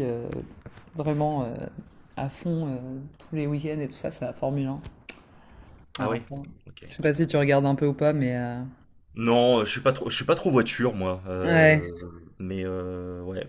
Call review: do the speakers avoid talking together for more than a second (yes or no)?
yes